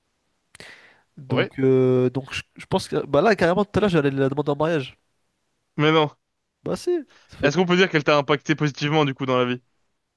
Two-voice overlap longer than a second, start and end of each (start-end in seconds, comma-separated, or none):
none